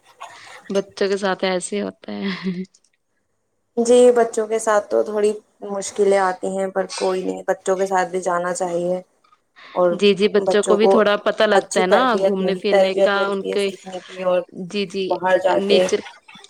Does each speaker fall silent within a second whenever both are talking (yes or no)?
no